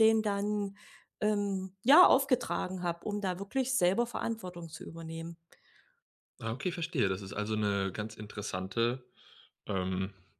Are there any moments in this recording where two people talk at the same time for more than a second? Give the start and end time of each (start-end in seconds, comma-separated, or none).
none